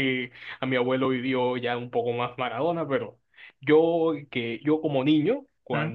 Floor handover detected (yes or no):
no